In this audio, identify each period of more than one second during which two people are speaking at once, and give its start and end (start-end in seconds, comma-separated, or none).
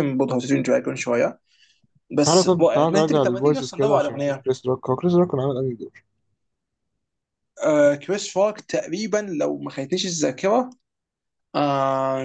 2.2-4.5